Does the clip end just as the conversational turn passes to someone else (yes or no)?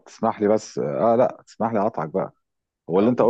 no